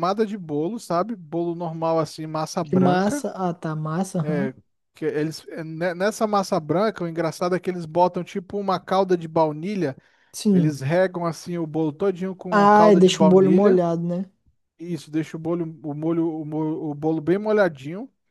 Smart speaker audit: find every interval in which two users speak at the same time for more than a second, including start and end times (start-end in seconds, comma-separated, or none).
12.5-13.8